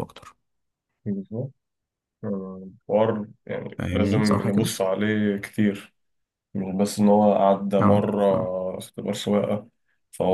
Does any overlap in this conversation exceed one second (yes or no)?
no